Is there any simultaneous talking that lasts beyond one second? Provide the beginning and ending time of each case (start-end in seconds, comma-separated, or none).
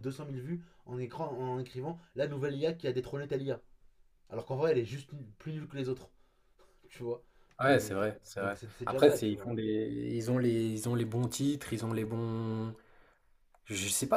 7.6-9.5